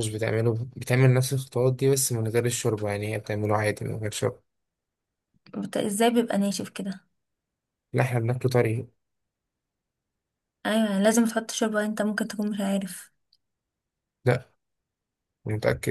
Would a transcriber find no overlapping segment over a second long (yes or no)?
yes